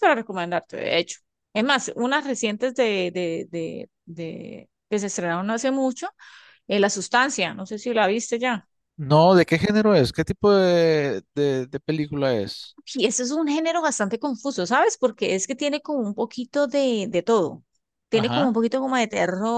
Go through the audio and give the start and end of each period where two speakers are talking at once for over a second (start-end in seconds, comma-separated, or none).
none